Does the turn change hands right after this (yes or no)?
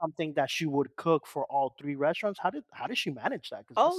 yes